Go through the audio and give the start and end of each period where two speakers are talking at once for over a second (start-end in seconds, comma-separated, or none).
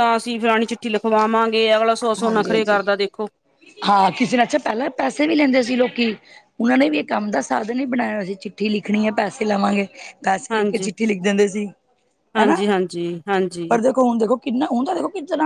none